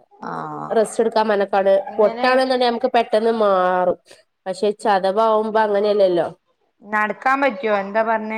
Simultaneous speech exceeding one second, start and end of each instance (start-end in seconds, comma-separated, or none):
none